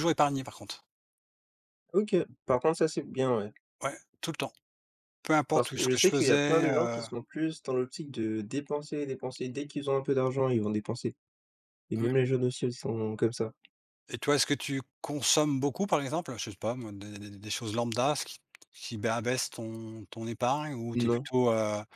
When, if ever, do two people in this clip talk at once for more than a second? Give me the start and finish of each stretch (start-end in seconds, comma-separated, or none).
5.5-7.0